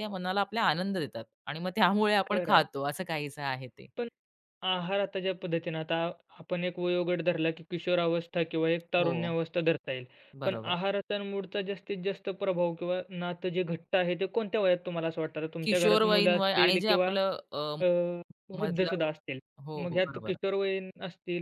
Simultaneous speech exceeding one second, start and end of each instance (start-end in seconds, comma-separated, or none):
15.6-17.1